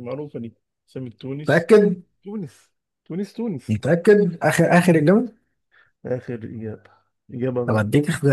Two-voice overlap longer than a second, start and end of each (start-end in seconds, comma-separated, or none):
none